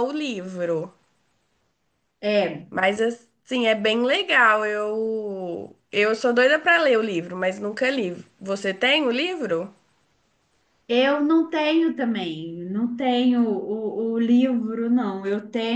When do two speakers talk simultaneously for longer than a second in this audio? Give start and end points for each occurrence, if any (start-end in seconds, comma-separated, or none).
none